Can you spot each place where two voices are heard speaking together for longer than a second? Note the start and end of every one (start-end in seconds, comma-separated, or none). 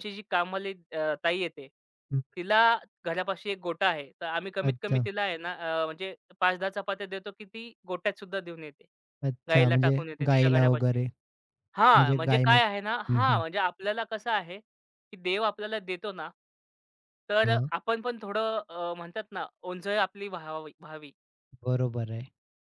9.5-11.0, 11.8-13.4